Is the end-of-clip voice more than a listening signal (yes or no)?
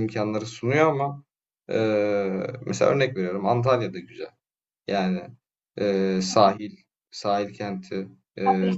yes